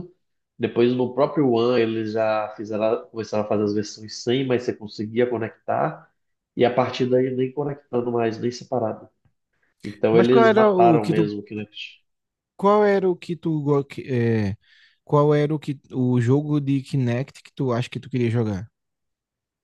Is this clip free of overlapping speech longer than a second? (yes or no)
no